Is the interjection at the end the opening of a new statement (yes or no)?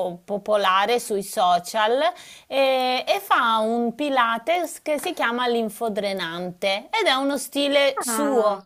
no